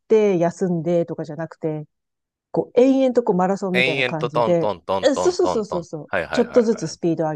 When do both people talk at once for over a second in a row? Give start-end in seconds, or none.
3.7-6.7